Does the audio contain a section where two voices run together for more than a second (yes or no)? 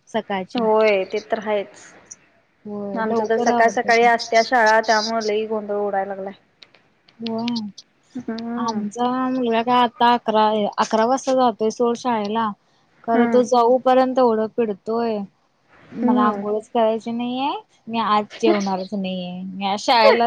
yes